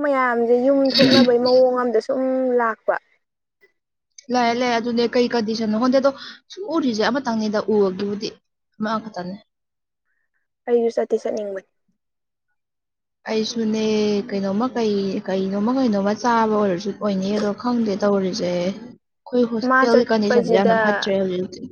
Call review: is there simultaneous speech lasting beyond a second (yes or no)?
yes